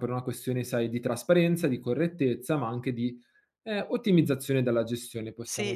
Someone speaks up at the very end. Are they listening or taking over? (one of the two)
taking over